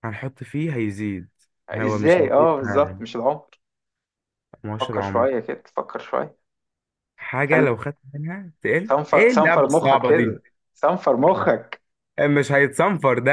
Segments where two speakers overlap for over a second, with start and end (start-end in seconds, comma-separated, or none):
1.7-3.0, 8.8-10.4